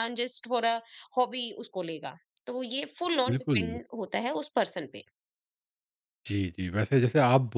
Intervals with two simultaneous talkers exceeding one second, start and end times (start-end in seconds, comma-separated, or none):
none